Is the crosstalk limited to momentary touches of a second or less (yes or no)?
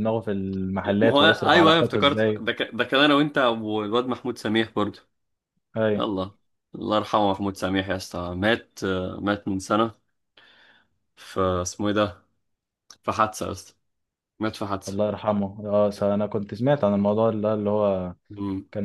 no